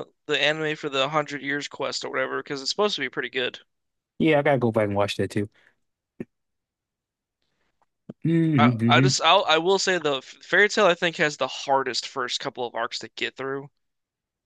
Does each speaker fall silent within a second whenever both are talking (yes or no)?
yes